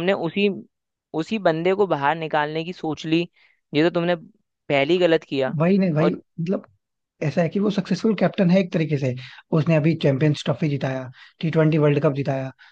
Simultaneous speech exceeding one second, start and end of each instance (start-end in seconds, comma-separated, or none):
none